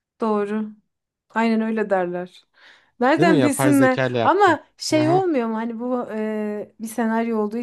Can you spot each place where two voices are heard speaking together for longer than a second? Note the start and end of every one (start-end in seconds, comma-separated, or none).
3.2-5.2